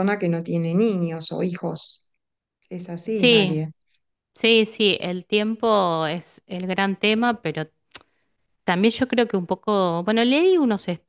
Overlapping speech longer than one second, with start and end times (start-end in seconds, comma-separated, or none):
none